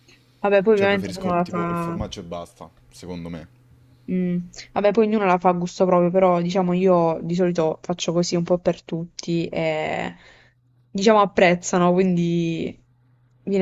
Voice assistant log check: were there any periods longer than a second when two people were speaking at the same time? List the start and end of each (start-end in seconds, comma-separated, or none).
0.7-2.0